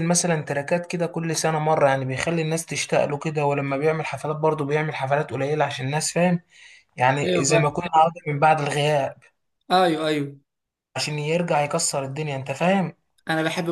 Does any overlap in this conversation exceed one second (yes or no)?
no